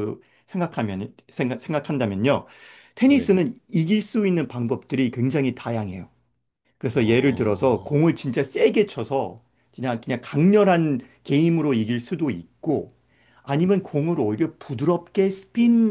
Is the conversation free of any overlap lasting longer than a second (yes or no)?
no